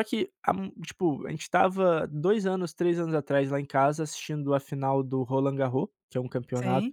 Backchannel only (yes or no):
yes